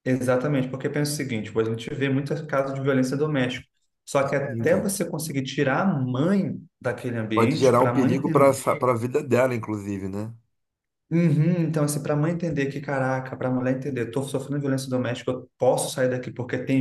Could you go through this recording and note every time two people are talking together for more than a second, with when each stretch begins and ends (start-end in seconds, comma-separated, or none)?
7.3-8.7